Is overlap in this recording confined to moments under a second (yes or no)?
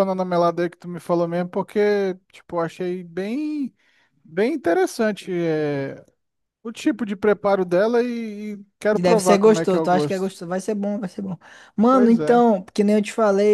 no